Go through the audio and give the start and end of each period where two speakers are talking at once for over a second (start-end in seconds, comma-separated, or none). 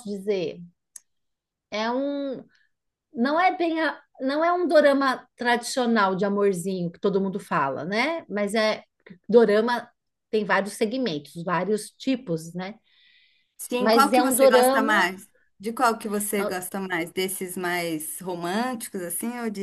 13.8-15.1